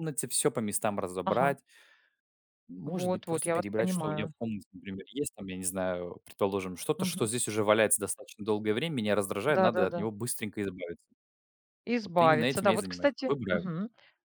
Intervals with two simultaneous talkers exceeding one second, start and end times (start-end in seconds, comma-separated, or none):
2.9-4.3, 12.0-13.7